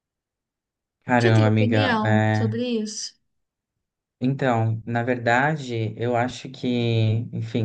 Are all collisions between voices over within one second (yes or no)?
no